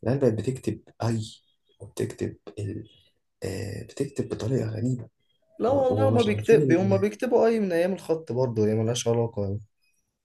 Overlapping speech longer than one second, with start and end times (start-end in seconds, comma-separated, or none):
5.7-7.1